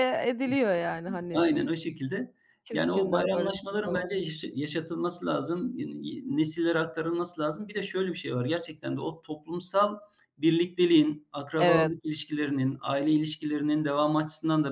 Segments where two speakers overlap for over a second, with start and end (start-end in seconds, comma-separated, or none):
2.7-4.1